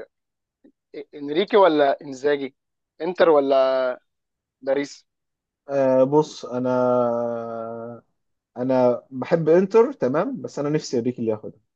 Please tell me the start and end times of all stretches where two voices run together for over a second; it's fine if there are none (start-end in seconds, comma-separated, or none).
none